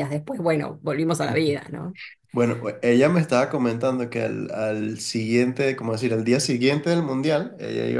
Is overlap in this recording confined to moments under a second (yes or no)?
yes